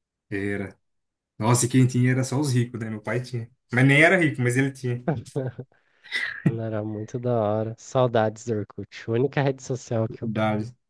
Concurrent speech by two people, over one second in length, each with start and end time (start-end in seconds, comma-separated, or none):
none